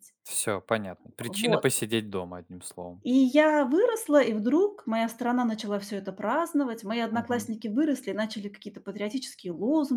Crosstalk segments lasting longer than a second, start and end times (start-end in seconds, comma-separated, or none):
none